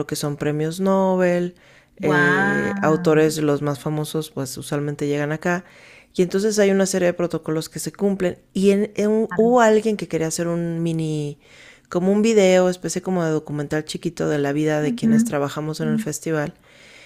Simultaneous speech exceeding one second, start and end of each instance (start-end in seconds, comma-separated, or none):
2.0-3.4